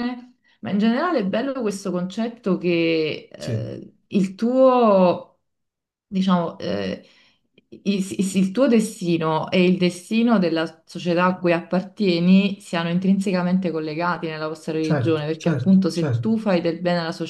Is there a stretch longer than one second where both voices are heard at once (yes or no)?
yes